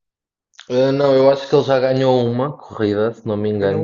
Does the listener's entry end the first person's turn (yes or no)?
no